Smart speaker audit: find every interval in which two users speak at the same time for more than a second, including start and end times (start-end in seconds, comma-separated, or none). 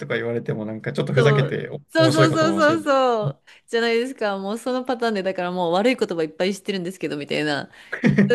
1.1-2.8